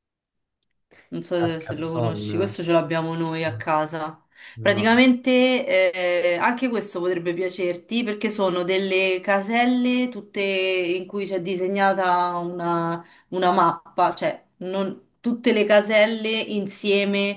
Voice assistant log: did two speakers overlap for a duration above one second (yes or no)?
yes